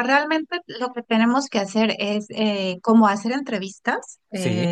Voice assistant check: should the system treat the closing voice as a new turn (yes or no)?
no